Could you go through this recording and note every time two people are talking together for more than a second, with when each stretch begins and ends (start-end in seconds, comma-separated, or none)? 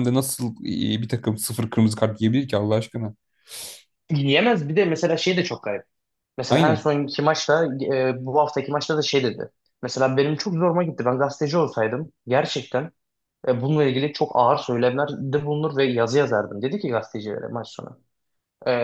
none